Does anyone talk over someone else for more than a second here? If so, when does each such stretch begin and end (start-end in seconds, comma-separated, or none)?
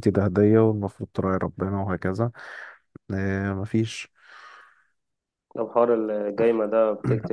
none